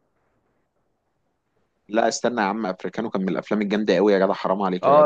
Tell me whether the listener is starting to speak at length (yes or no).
yes